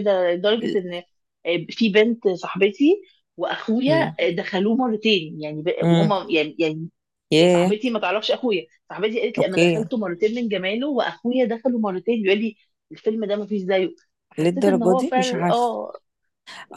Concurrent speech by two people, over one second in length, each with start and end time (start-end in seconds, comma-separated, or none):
14.4-15.7